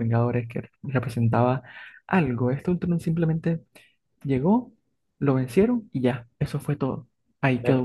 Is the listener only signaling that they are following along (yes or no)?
no